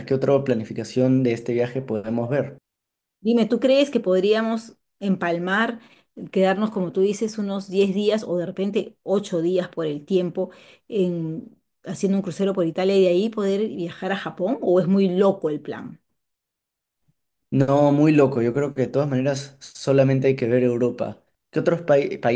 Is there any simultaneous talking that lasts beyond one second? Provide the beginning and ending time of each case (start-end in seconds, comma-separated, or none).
none